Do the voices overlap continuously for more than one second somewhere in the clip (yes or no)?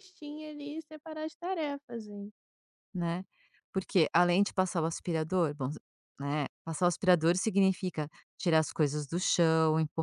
no